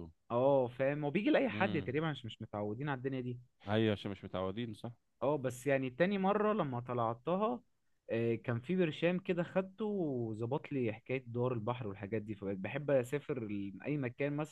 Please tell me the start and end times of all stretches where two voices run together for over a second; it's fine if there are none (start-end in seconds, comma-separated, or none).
none